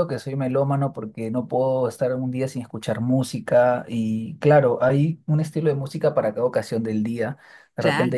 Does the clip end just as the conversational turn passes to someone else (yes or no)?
no